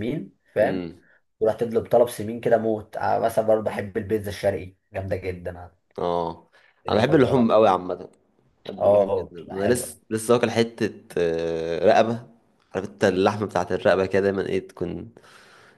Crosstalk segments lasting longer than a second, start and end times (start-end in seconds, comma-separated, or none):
8.8-10.0